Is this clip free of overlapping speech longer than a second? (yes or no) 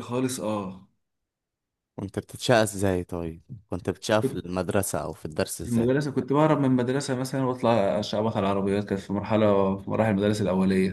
yes